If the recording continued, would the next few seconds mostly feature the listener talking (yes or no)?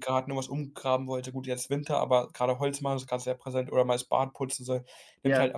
no